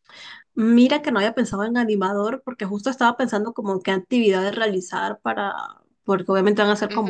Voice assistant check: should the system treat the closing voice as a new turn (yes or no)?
no